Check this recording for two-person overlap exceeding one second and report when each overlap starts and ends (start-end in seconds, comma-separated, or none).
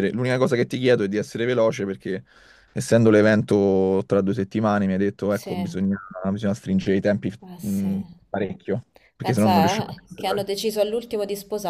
9.2-10.5